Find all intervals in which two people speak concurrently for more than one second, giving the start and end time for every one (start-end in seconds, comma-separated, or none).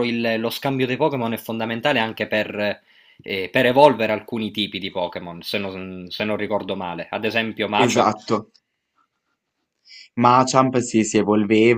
none